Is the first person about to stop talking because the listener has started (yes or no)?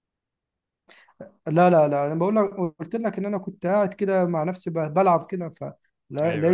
no